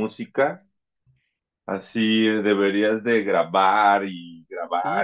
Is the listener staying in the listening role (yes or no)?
no